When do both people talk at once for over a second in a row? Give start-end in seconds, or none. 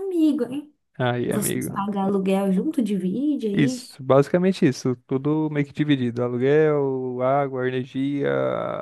none